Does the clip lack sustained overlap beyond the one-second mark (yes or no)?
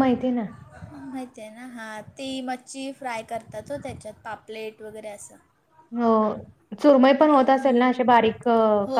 yes